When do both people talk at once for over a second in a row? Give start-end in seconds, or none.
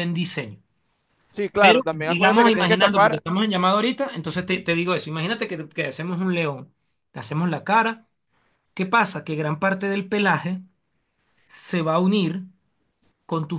1.6-3.2